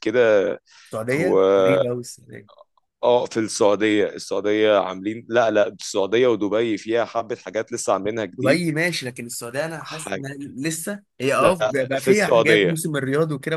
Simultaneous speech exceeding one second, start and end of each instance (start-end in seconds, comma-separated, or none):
11.4-12.8